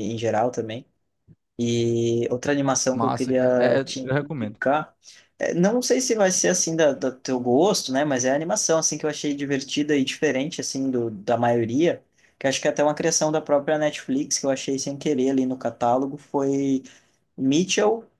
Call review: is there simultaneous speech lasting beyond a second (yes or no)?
yes